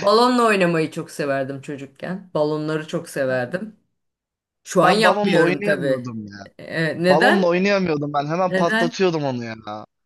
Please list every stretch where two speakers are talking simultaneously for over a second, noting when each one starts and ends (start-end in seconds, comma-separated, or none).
4.8-6.1